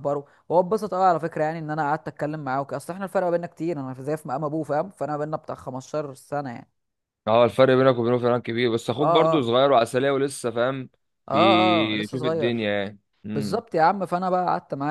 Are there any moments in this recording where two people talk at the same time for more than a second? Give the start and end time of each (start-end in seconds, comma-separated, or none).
11.3-12.7